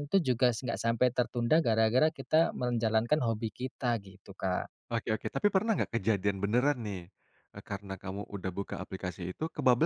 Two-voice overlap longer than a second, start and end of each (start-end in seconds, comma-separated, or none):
none